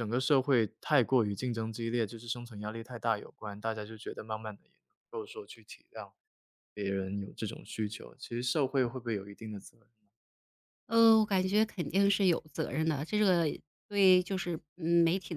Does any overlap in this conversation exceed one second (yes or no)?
no